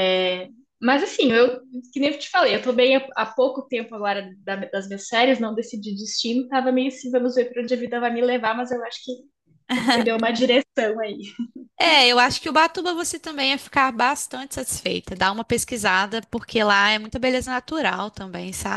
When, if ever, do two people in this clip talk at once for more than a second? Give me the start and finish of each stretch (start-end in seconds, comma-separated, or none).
none